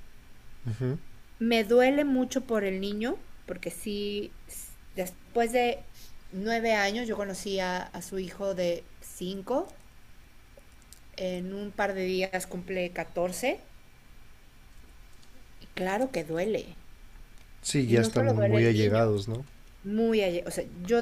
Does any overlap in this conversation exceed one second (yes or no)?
yes